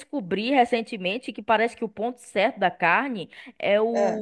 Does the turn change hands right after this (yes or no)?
no